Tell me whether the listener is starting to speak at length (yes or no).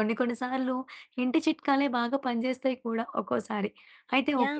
no